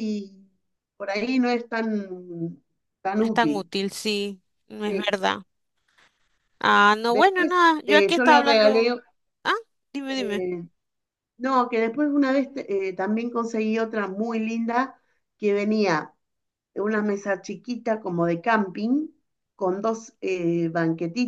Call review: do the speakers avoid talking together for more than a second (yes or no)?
no